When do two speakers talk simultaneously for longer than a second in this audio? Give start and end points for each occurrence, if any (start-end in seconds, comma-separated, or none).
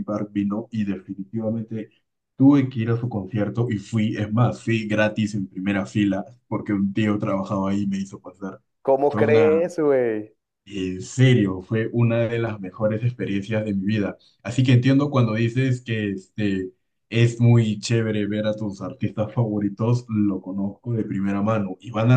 none